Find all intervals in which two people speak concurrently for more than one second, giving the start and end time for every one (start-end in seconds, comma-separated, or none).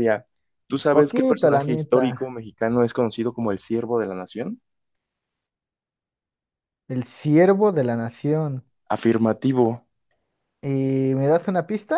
0.9-2.4